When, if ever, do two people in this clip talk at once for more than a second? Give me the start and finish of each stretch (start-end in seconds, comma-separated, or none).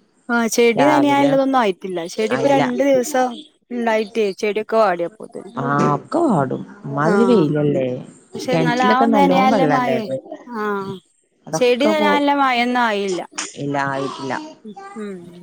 8.5-10.1